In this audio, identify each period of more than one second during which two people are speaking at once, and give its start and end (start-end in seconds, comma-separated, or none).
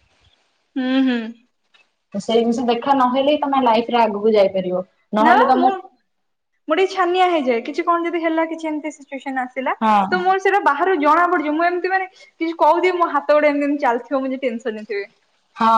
none